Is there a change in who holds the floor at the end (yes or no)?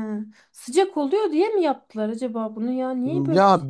yes